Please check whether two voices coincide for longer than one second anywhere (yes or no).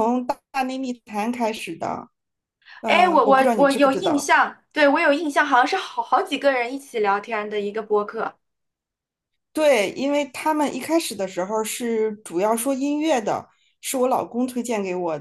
yes